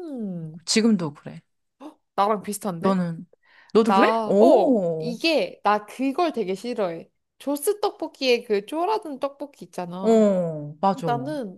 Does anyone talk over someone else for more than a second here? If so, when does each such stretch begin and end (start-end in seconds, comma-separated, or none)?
3.9-5.1